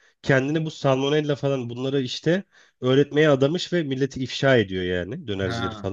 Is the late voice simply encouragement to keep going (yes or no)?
yes